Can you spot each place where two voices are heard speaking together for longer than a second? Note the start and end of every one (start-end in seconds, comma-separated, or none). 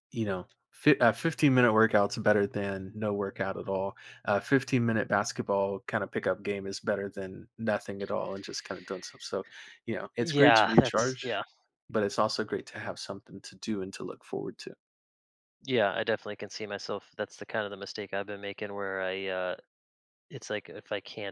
10.2-11.4